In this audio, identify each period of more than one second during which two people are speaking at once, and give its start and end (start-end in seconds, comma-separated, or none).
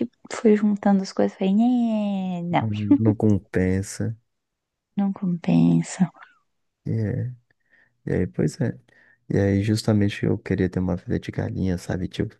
none